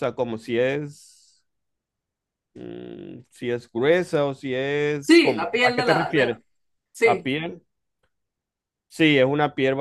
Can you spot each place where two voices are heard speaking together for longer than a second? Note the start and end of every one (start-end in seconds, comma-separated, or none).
5.1-6.3